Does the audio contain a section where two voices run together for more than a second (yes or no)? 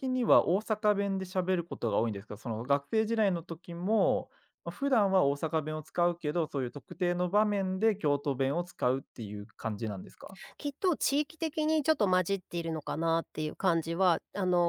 no